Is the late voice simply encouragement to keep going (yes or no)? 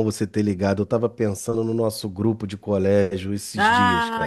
no